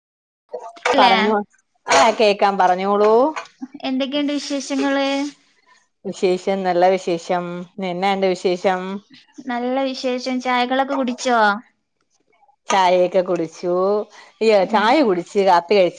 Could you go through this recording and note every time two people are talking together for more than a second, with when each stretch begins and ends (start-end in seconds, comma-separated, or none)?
none